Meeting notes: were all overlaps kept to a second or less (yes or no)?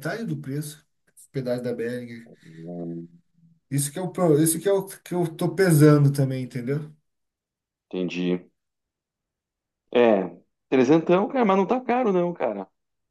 yes